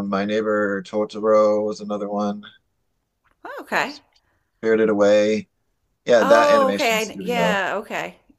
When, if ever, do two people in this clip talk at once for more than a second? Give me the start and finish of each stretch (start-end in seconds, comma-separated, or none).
6.2-7.6